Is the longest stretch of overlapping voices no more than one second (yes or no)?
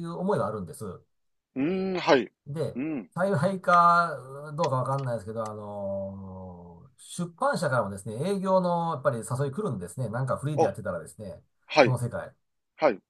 yes